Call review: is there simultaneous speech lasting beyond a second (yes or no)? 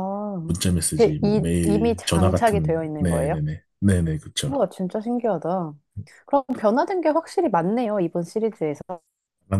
yes